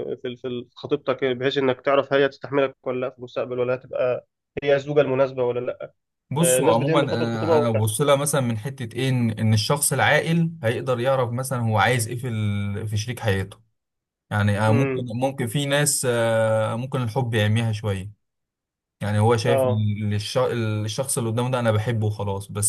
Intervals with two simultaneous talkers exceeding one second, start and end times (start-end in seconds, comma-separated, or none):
6.4-7.8